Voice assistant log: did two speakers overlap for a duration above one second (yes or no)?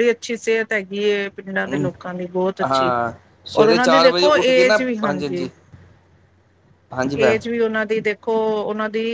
yes